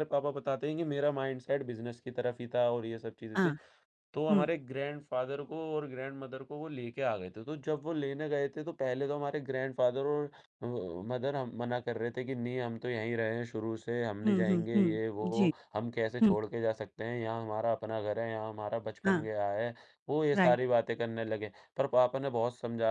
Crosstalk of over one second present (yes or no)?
yes